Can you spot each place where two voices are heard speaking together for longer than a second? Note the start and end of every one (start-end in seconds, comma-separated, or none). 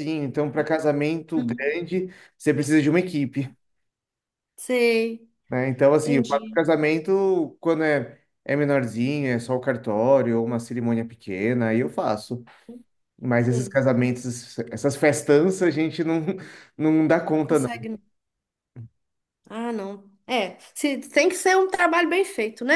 none